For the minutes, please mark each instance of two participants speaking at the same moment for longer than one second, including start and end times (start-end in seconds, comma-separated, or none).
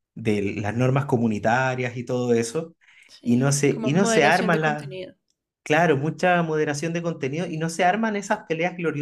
3.2-4.9